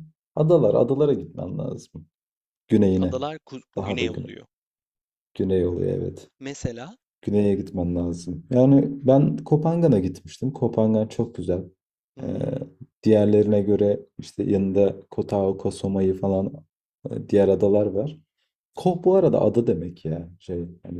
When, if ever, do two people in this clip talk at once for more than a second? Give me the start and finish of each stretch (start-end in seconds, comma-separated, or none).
none